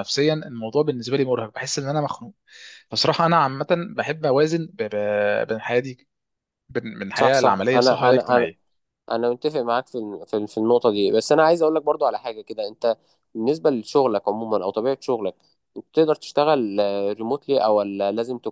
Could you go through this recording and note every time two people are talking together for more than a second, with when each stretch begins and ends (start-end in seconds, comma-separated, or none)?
7.1-8.5